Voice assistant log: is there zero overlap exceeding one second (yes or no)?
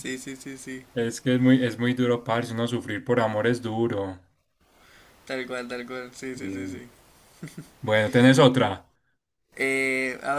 yes